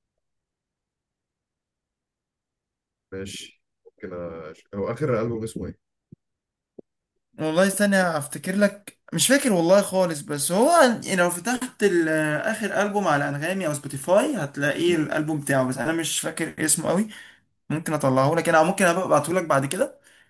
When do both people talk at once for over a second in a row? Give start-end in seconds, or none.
none